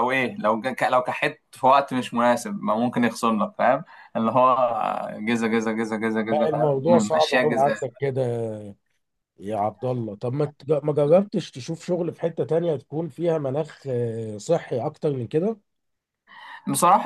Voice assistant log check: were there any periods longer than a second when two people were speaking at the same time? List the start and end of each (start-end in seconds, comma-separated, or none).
6.3-7.8